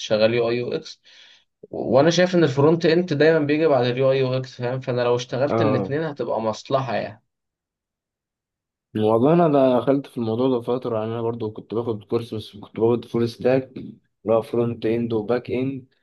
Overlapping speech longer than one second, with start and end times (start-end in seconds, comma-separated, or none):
none